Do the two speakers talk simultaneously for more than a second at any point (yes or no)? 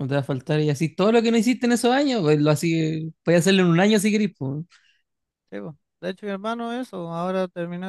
no